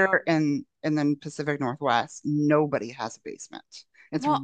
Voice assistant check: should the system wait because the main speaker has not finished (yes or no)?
yes